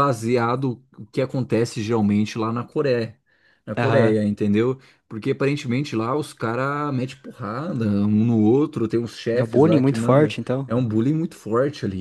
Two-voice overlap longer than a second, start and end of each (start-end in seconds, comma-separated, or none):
9.3-10.7